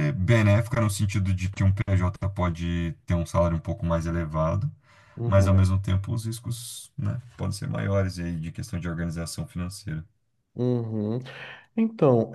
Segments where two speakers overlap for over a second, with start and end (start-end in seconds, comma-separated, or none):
none